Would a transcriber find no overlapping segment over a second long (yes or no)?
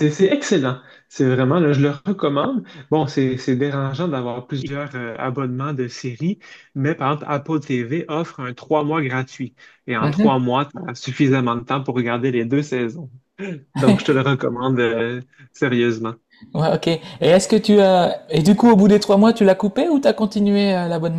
yes